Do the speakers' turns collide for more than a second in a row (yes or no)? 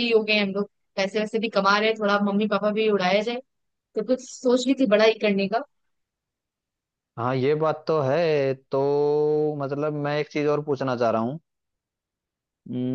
no